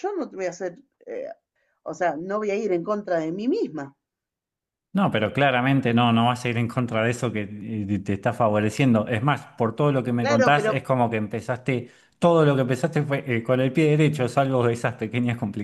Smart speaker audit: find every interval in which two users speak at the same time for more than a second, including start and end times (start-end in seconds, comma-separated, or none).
none